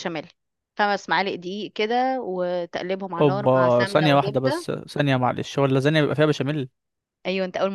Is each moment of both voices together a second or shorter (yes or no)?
no